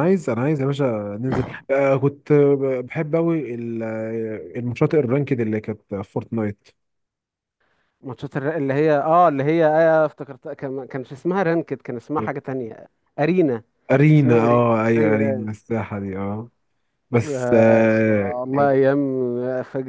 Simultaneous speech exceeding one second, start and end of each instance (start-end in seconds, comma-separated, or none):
14.2-15.5, 17.3-18.7